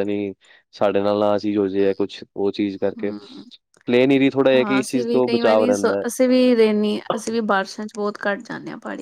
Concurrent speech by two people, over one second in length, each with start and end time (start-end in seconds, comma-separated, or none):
4.5-6.1